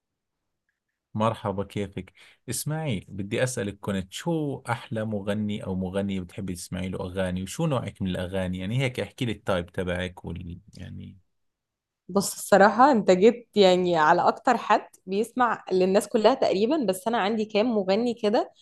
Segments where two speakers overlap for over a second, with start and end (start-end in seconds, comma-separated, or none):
none